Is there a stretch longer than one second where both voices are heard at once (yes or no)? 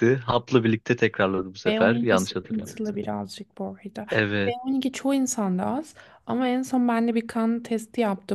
yes